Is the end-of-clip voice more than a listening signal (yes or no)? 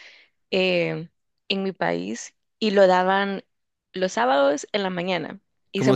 yes